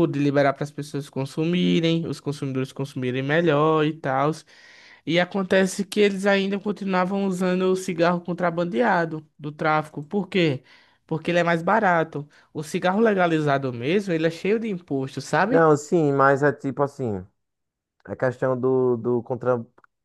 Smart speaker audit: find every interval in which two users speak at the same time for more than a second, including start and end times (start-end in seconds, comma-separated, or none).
none